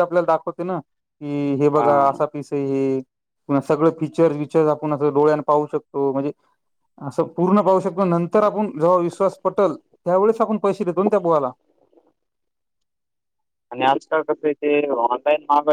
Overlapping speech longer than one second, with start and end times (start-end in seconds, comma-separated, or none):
none